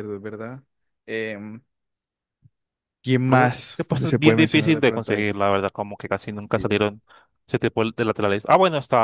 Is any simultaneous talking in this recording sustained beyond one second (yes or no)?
yes